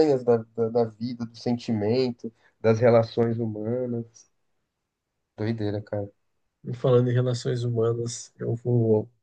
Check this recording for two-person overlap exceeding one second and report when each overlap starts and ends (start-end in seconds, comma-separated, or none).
none